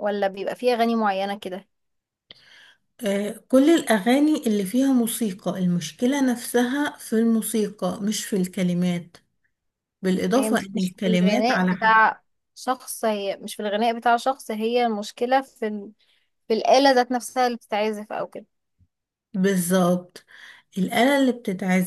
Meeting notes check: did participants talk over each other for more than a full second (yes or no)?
yes